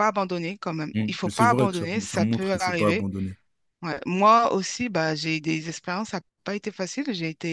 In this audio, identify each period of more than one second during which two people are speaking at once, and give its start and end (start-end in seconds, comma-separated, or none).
0.9-3.1